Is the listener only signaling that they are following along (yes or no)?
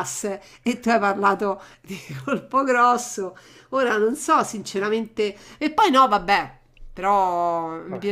yes